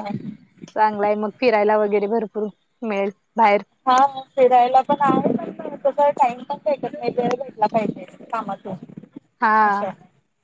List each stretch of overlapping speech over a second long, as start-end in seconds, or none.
none